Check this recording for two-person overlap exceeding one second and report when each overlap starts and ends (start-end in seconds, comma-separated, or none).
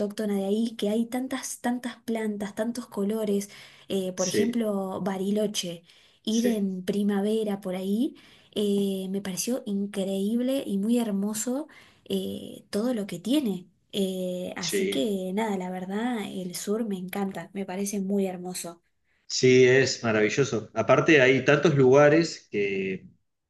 none